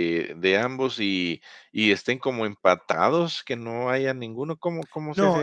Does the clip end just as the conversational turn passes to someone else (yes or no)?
yes